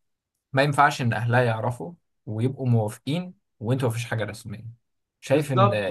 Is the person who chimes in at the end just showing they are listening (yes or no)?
no